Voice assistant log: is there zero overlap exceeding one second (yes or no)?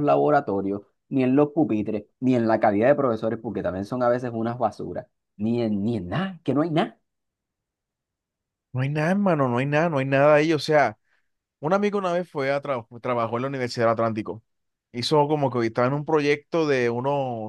yes